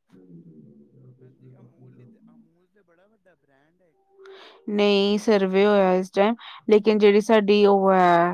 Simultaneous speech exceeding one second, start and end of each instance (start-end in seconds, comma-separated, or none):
none